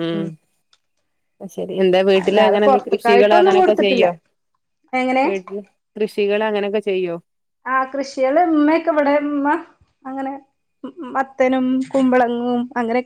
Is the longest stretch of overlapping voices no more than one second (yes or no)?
no